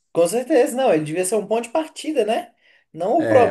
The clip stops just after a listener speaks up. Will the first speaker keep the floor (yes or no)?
no